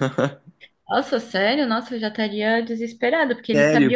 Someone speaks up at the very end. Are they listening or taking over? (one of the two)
taking over